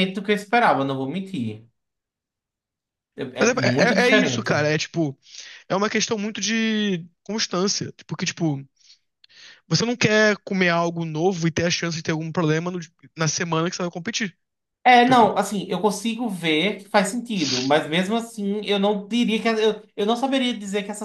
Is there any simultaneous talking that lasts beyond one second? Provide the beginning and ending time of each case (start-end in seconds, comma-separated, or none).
3.4-4.7